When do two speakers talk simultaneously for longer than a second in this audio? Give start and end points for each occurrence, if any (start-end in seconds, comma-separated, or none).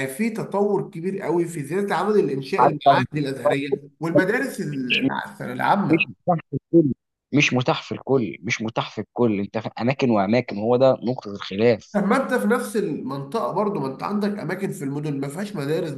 none